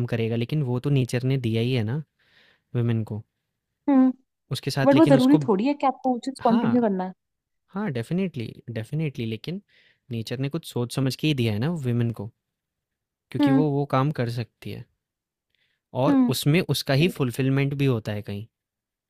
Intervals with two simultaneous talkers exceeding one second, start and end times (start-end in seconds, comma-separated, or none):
none